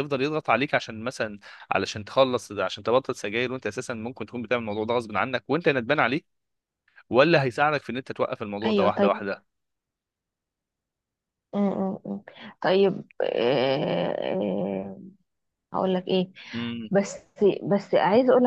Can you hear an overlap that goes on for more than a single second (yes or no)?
no